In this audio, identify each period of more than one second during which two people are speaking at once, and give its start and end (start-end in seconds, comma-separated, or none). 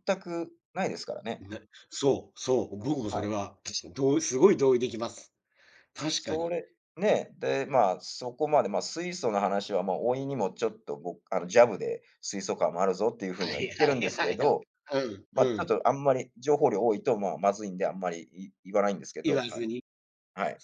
13.3-14.7